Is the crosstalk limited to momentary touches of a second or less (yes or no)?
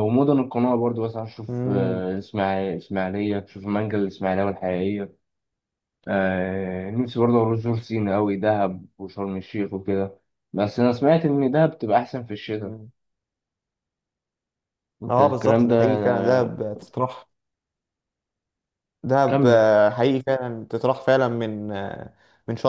no